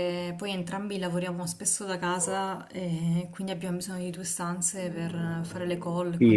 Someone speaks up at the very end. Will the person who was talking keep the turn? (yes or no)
no